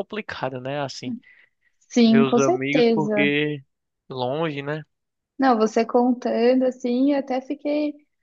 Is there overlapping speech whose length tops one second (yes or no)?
yes